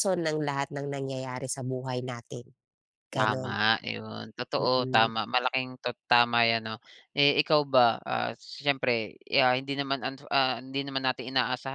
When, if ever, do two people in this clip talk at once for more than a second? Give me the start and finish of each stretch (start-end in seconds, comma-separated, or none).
none